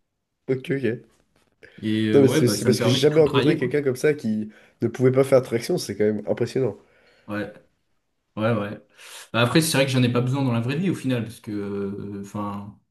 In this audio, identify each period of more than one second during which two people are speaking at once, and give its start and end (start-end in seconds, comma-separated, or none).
2.1-3.7